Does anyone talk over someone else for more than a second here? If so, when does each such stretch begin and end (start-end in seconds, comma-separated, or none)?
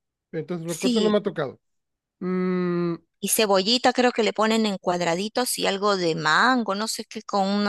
none